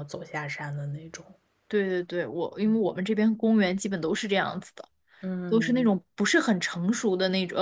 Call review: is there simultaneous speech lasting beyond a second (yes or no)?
no